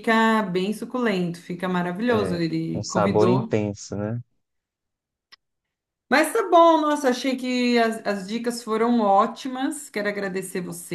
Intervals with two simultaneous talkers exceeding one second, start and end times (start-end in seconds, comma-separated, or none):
2.1-3.5